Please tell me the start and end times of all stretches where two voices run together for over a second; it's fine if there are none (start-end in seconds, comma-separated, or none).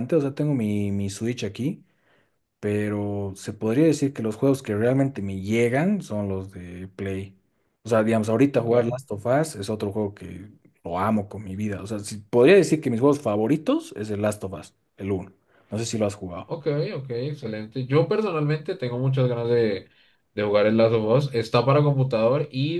none